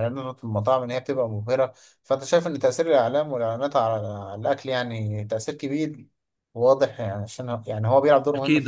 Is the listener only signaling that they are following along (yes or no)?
no